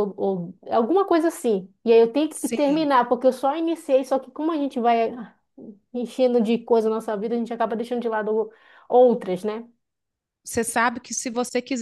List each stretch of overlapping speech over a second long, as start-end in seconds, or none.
none